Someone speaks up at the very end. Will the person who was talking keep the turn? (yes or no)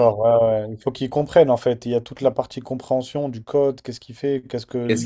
yes